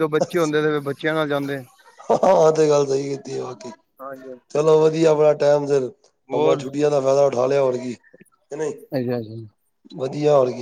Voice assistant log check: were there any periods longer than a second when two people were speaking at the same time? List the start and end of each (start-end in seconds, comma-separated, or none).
none